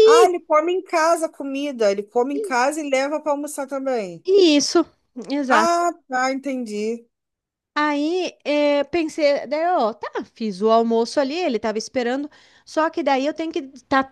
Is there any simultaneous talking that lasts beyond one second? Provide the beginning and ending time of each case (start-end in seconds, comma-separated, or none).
none